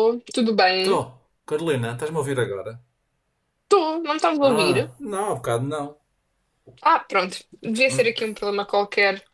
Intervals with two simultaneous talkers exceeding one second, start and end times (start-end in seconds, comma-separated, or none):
none